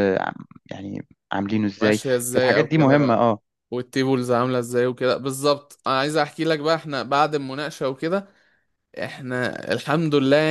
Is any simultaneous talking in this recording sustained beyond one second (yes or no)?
yes